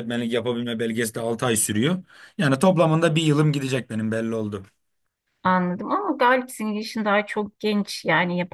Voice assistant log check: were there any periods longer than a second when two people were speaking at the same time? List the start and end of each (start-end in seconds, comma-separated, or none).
none